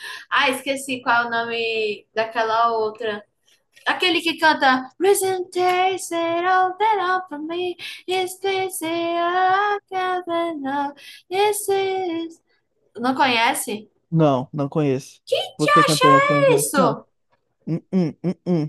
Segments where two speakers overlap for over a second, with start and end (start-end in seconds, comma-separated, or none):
15.6-17.0